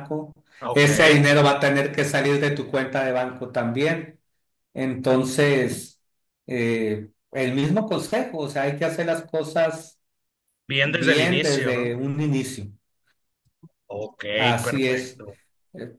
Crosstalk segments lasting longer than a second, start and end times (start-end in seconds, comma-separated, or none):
10.8-12.0